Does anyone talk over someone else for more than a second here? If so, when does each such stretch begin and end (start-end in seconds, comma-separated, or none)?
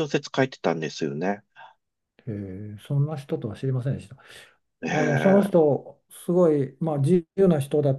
none